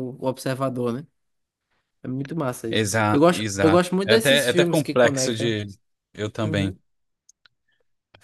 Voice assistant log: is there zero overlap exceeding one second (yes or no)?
no